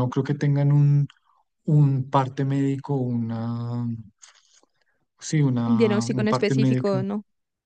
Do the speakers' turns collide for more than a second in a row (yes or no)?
yes